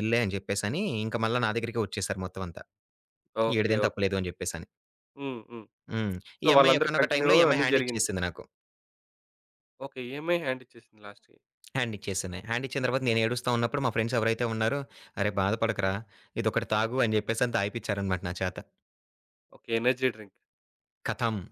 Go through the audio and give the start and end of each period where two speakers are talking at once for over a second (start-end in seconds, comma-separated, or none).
6.4-8.1